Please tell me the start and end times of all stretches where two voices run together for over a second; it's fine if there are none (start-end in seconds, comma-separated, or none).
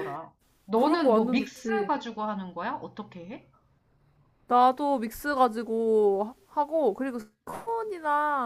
0.7-1.9